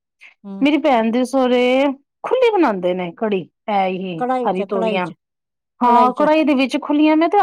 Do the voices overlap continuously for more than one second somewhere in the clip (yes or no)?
no